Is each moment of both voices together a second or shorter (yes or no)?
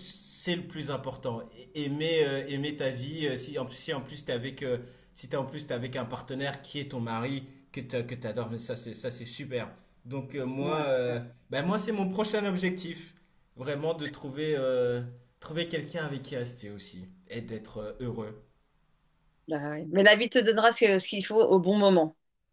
yes